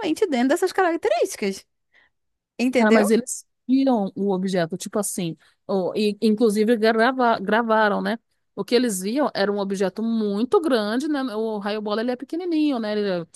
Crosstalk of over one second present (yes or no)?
no